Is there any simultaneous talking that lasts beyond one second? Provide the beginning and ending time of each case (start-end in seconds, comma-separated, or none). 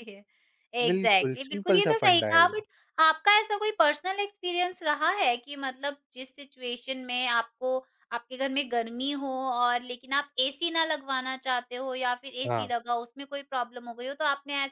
0.9-2.5